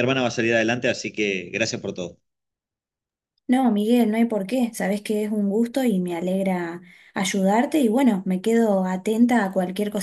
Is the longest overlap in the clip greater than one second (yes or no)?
no